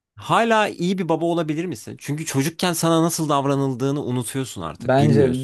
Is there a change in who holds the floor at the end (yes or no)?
yes